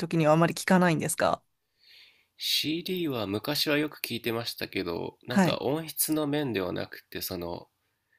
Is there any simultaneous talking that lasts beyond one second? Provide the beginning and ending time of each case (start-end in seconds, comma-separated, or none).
none